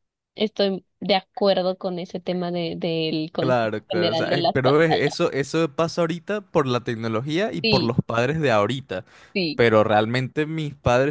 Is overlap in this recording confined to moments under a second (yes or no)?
no